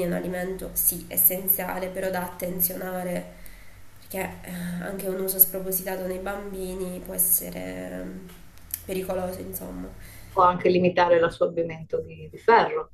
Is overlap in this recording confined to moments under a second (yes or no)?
yes